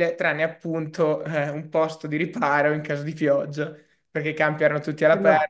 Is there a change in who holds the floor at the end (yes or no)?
no